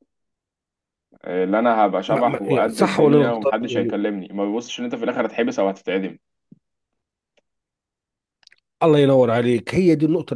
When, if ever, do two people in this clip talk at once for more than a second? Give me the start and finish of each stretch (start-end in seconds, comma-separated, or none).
2.1-4.0